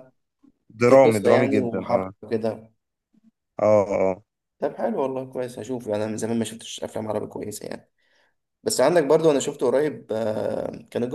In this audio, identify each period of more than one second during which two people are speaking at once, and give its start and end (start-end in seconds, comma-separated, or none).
0.9-2.1